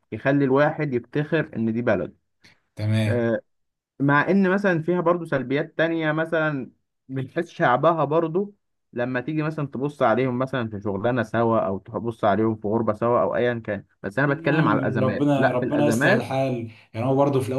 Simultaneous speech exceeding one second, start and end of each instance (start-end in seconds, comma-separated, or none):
14.2-16.2